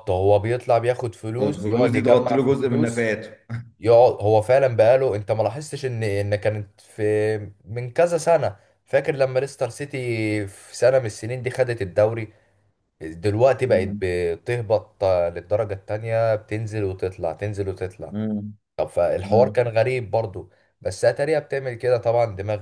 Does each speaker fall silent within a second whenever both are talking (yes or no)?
no